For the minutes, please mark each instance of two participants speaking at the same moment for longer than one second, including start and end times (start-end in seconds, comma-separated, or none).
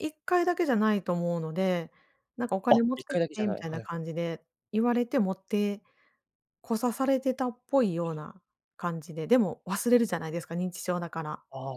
2.7-4.1